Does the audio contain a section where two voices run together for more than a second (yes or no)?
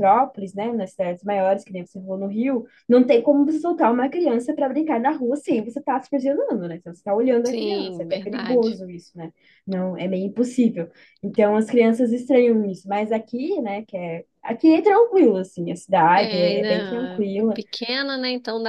yes